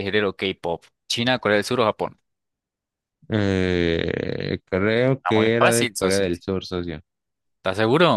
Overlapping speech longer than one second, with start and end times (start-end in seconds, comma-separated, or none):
5.2-6.4